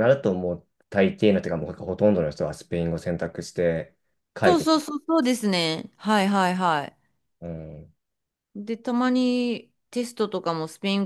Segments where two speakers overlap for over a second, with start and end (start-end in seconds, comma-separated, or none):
none